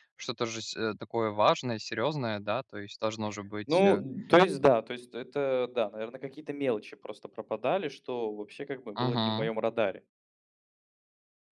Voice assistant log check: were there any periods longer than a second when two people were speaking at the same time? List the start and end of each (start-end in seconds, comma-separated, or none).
none